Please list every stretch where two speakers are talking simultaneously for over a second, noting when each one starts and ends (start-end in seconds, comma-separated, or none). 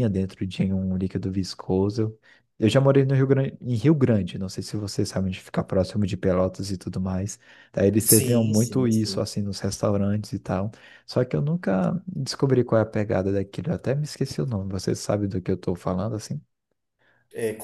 8.0-9.3